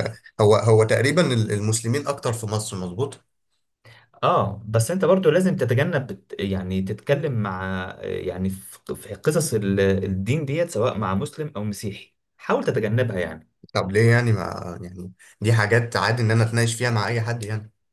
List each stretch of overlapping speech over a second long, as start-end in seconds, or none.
none